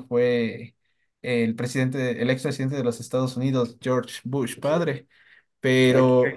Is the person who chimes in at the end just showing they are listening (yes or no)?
yes